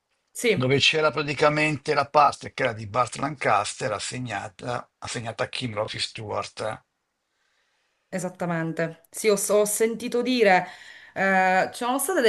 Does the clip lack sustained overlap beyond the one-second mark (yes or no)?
yes